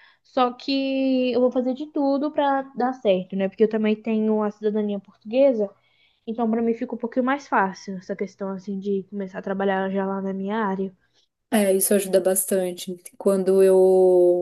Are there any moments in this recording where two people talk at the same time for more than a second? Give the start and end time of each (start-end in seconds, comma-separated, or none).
none